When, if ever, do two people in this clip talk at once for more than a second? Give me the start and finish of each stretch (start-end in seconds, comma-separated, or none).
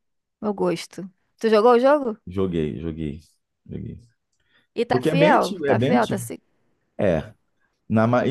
4.9-6.2